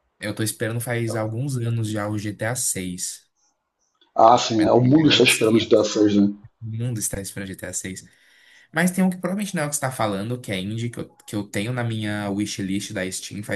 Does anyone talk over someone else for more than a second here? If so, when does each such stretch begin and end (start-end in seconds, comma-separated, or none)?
4.6-5.8